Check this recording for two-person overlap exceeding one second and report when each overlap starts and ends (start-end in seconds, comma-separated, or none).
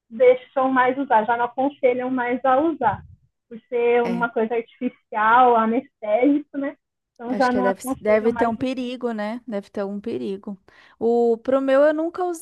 7.3-8.8